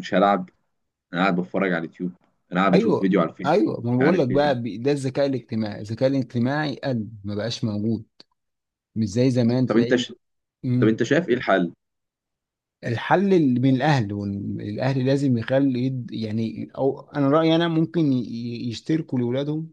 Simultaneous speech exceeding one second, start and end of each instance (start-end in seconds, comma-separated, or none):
2.7-4.7